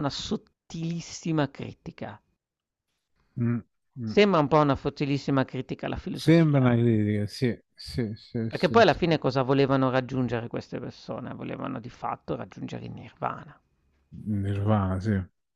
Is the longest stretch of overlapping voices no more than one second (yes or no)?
yes